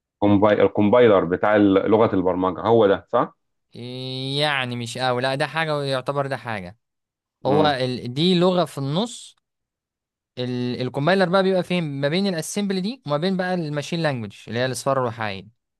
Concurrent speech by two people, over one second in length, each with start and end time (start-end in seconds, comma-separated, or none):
none